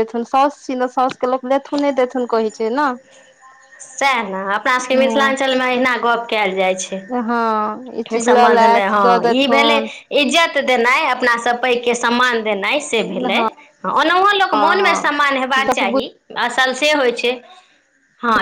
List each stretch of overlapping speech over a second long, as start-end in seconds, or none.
14.6-15.8